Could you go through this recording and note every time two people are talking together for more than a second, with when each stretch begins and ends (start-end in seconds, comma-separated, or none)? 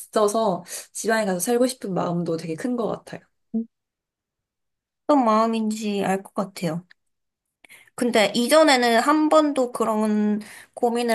none